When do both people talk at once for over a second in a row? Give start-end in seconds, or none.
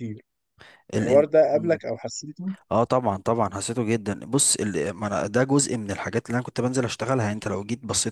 none